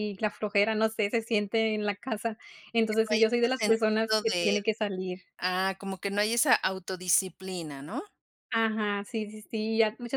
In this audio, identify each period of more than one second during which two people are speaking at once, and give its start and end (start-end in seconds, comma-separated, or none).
2.9-4.5